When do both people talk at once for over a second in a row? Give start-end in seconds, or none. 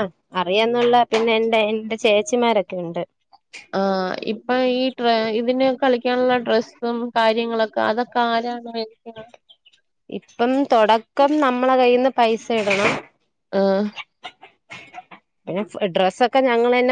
none